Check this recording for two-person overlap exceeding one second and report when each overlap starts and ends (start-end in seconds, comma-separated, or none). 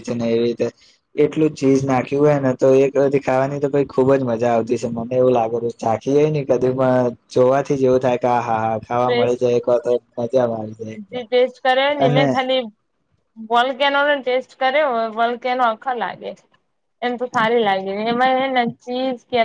none